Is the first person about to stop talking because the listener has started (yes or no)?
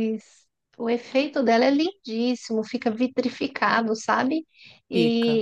no